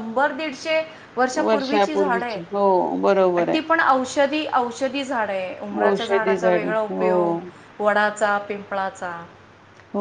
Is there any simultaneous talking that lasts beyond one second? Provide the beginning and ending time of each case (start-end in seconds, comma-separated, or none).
5.8-7.3